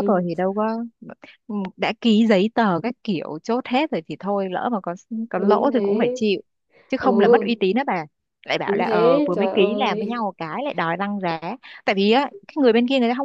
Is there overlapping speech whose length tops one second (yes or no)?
yes